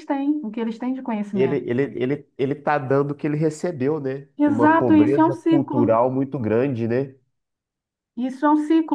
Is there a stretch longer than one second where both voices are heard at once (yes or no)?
yes